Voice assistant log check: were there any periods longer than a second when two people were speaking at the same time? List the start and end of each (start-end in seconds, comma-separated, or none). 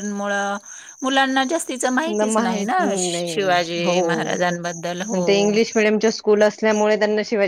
2.0-3.5